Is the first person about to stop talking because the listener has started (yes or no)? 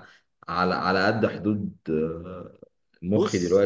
no